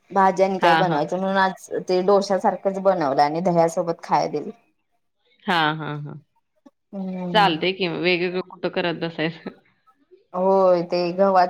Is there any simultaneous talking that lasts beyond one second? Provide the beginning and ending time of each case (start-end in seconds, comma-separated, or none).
none